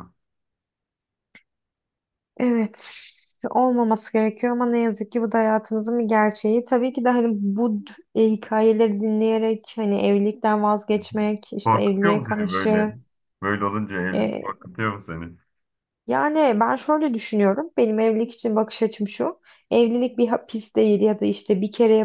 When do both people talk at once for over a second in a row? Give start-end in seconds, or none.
11.6-12.9